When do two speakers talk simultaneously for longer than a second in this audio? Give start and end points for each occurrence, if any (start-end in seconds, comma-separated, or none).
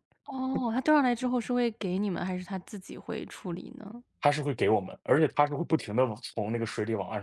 none